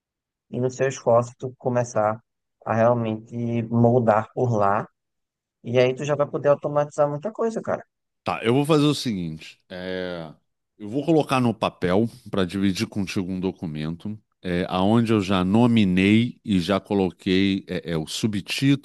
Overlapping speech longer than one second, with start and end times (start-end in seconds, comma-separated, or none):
none